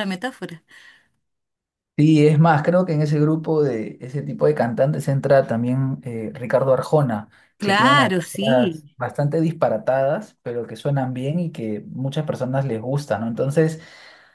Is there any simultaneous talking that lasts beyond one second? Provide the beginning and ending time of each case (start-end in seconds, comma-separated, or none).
7.6-9.0